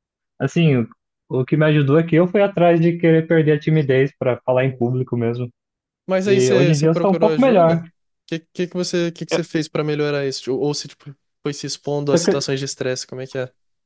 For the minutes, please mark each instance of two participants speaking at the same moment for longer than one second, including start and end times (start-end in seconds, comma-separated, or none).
6.2-7.8